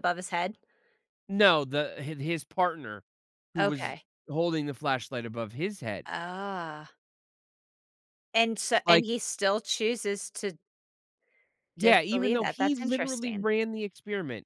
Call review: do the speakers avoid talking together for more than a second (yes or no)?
no